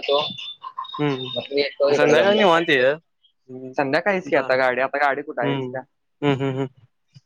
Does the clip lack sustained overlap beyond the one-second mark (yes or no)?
no